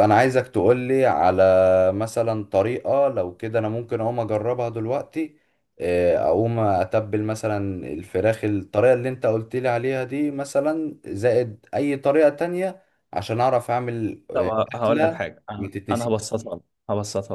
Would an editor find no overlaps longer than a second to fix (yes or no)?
no